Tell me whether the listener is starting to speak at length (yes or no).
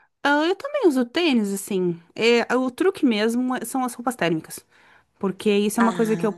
no